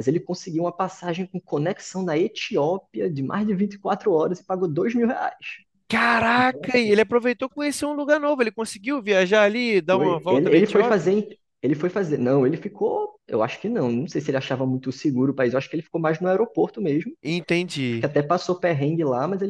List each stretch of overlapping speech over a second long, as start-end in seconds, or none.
9.9-11.1